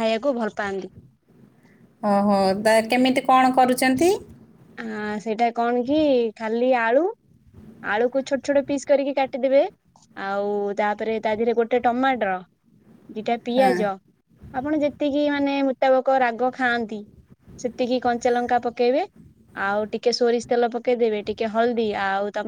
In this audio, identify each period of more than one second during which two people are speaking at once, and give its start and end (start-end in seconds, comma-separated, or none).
none